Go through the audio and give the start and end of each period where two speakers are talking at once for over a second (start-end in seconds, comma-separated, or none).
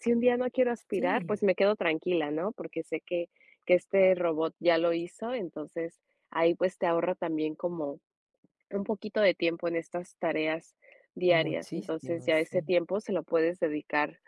11.3-12.7